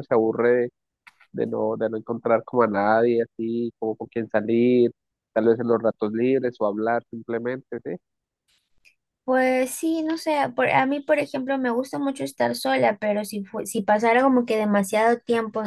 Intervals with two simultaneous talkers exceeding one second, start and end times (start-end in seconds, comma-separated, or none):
none